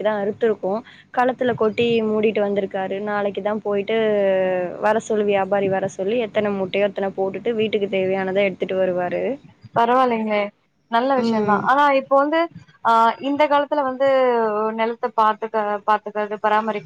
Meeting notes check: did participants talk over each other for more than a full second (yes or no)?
no